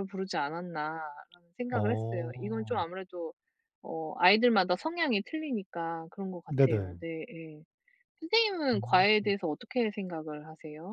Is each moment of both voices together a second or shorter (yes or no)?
no